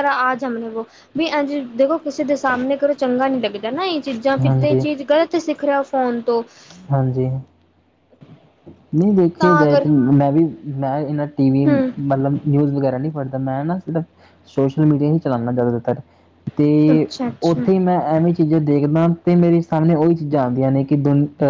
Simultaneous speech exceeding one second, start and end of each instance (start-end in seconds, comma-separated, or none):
none